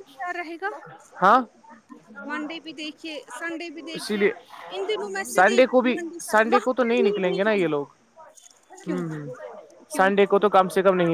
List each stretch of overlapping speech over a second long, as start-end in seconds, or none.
5.3-7.8